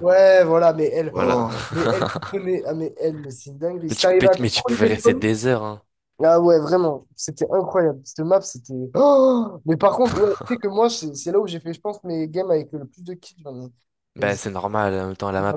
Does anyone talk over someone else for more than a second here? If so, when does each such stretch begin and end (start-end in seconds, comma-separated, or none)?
3.9-5.3